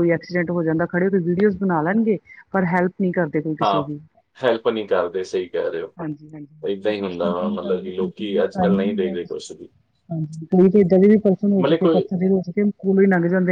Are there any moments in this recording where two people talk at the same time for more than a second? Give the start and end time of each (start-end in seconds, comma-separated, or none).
6.7-9.6